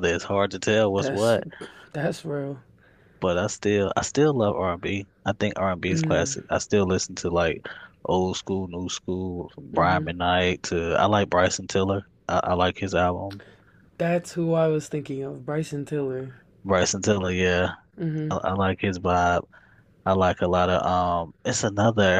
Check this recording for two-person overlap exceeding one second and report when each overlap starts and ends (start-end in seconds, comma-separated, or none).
none